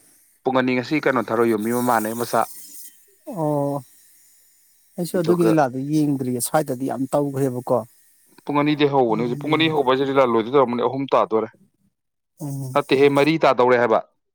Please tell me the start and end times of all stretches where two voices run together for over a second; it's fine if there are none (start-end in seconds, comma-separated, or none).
none